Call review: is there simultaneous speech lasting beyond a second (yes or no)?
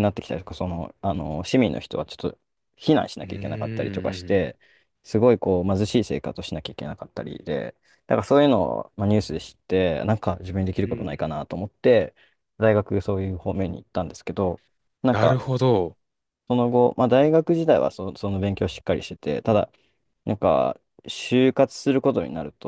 yes